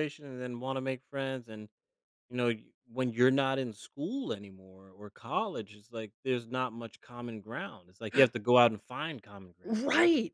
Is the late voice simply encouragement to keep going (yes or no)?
no